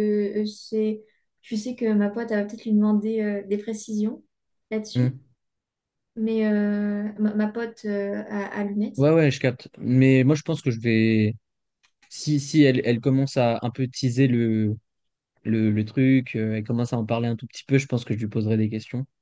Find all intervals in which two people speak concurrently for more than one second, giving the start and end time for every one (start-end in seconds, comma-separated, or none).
none